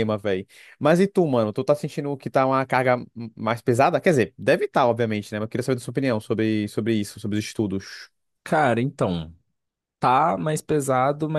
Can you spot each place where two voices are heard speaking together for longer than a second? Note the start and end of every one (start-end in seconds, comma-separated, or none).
none